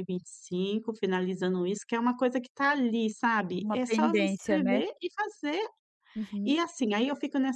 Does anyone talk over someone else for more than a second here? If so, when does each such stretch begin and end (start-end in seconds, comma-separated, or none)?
3.6-4.8